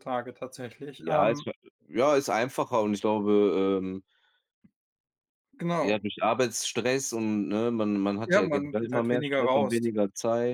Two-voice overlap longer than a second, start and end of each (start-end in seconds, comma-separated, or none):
8.2-9.9